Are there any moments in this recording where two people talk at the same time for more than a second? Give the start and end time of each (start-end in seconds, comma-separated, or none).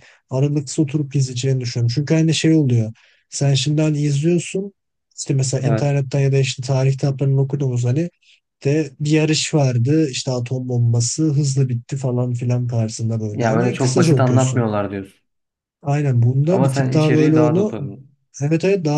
13.3-14.7, 16.5-17.7